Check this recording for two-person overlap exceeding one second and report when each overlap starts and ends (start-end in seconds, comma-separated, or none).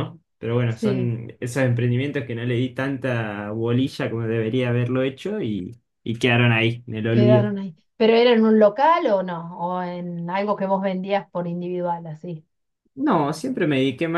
none